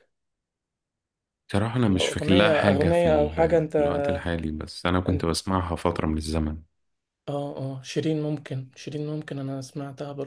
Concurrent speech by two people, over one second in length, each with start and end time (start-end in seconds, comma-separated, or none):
1.9-3.6